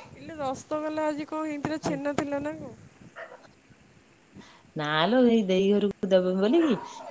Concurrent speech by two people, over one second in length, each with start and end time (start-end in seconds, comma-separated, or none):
none